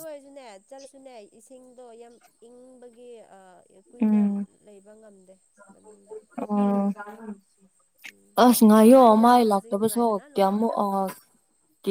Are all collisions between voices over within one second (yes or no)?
no